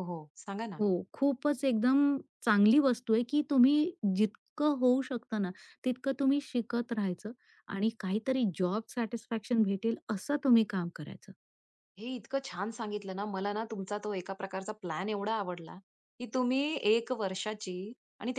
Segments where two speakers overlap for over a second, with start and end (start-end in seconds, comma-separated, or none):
none